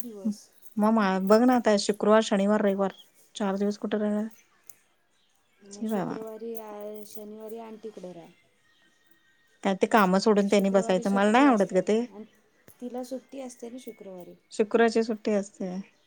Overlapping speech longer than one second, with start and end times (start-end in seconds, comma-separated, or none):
10.5-12.0